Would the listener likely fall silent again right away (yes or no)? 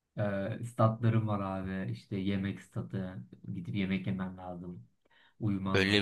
no